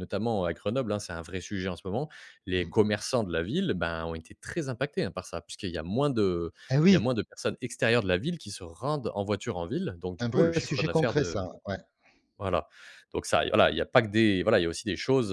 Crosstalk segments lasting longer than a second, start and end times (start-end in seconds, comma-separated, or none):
10.2-11.5